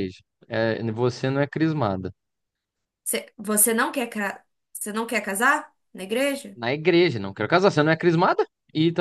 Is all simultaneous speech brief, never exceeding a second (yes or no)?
yes